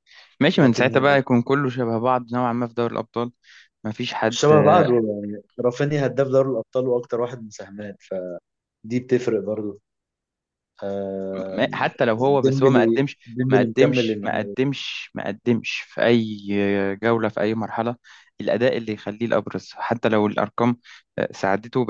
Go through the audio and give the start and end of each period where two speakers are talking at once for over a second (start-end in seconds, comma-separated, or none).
12.4-14.6